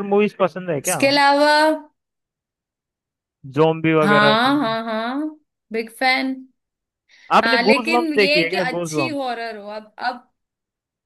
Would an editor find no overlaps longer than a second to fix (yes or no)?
no